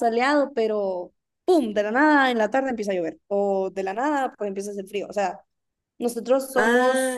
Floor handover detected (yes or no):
no